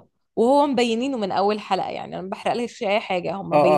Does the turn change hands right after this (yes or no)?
yes